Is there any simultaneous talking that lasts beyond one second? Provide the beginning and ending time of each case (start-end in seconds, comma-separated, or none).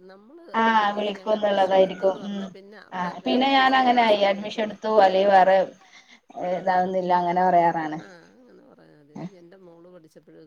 0.8-2.4